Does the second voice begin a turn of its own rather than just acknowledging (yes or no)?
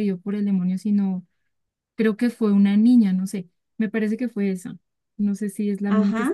yes